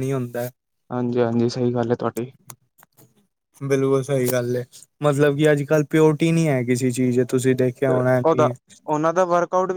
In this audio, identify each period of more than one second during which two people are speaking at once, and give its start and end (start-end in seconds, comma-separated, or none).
none